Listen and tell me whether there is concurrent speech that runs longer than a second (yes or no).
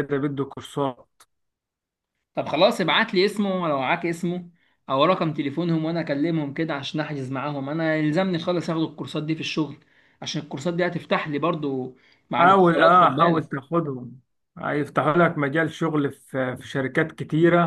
yes